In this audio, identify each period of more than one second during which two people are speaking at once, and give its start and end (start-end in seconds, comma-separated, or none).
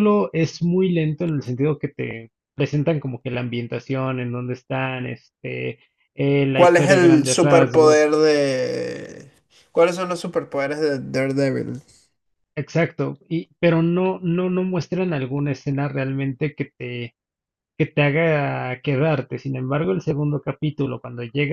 6.5-8.1